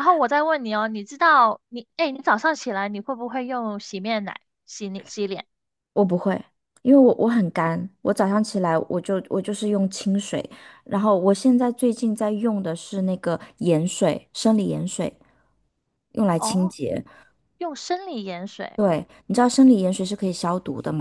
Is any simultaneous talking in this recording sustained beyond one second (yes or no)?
no